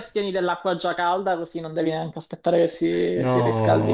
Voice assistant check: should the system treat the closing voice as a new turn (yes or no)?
yes